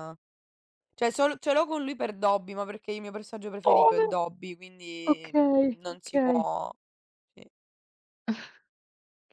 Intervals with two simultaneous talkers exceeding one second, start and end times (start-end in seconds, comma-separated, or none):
5.1-6.5